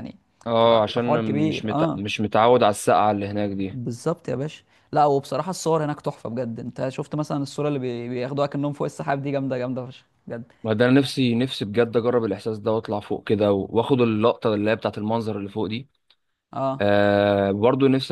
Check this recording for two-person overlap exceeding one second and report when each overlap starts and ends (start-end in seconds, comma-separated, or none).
0.6-2.0